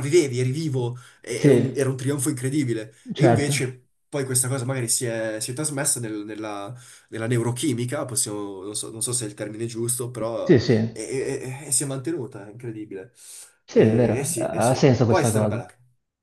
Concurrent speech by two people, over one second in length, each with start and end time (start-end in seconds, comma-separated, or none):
13.7-15.6